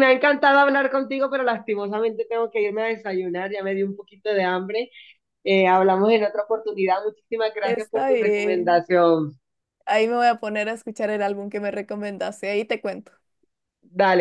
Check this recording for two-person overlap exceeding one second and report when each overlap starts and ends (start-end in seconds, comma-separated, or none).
7.6-8.8